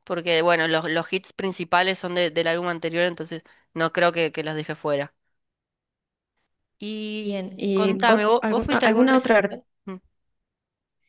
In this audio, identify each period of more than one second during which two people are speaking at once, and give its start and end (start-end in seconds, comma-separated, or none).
7.2-9.4